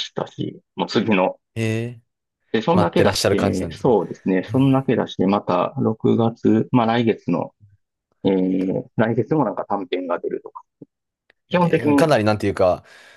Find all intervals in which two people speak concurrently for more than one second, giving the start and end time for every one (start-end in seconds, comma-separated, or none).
2.7-3.9